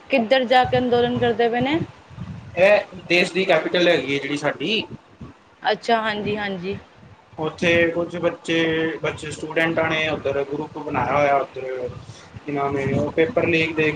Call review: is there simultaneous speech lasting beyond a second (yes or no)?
no